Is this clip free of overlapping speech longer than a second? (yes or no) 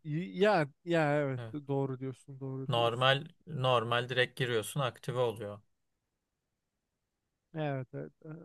yes